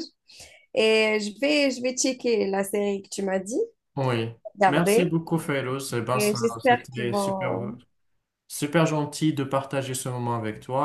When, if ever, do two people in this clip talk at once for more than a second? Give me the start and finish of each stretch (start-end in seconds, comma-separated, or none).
6.1-7.8